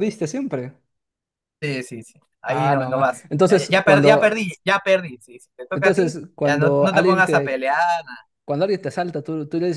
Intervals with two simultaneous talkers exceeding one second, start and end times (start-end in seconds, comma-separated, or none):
2.5-4.4, 5.7-7.7